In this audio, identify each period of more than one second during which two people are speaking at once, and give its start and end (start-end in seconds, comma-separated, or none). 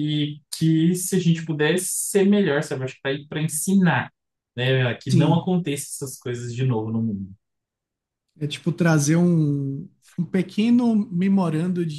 none